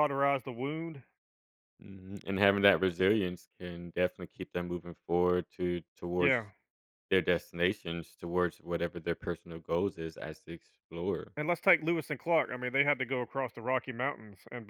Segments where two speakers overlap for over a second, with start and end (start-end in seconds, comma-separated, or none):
none